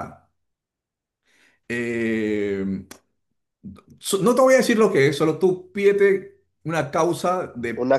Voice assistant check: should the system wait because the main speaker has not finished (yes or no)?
yes